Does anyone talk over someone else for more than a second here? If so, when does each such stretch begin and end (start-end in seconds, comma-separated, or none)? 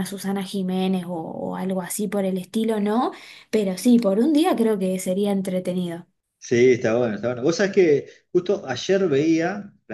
none